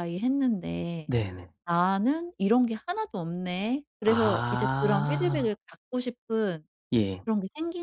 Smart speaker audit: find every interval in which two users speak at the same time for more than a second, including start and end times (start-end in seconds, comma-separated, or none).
4.0-5.5